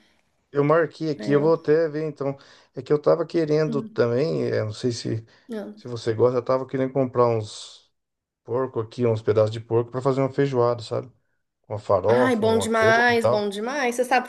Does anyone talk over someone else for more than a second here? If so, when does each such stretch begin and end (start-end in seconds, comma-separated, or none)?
12.1-13.5